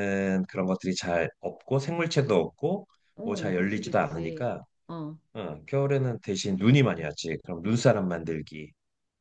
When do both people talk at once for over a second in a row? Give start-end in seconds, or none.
3.2-4.5